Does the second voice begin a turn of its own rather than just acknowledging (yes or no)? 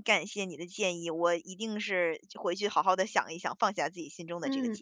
yes